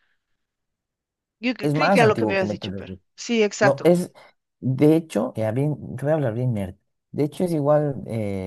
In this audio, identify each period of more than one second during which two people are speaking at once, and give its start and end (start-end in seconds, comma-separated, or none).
1.6-3.0